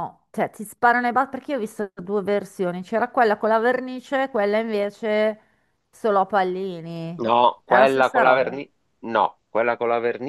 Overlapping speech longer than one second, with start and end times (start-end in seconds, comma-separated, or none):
7.2-8.6